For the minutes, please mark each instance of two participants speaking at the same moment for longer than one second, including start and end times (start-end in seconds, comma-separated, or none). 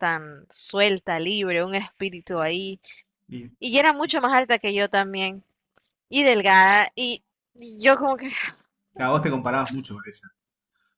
none